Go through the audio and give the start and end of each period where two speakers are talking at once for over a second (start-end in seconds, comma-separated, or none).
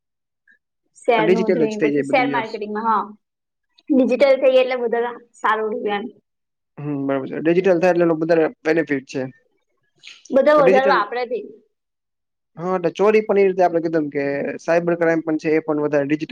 1.3-2.6